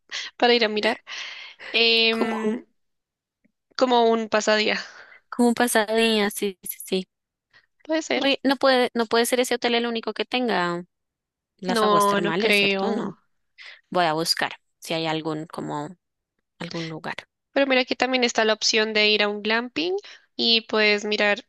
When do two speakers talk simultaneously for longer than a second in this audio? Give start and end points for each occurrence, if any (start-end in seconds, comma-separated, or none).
11.7-13.2